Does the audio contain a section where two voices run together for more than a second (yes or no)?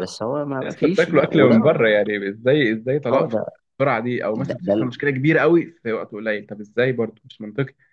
yes